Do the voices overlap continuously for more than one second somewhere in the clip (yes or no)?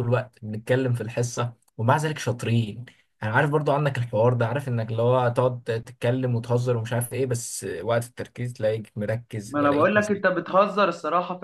no